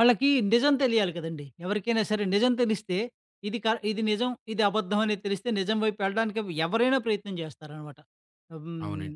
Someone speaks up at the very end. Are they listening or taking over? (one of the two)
listening